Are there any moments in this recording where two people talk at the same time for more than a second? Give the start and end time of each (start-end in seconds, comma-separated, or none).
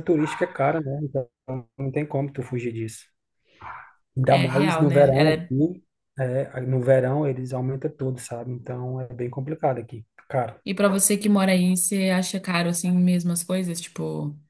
4.3-5.5